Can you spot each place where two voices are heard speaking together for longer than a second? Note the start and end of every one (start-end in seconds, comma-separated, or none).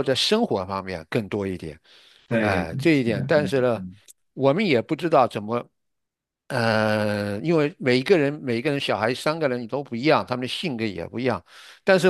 2.4-3.8